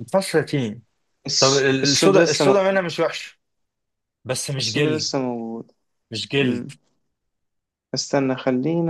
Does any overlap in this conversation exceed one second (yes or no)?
yes